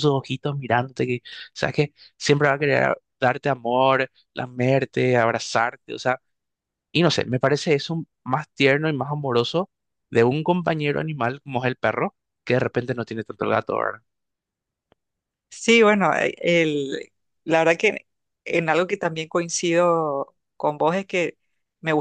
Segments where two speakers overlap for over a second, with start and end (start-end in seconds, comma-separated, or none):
none